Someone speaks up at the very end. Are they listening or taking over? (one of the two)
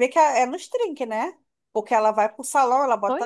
listening